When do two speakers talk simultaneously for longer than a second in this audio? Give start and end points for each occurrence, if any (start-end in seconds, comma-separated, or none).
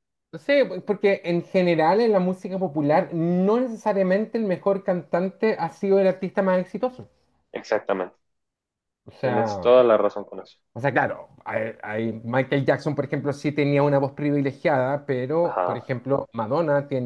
none